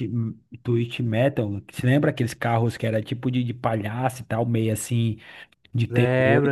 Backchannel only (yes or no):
no